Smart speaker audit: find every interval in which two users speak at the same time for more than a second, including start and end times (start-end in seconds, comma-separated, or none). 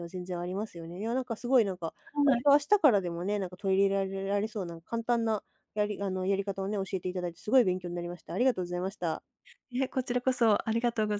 none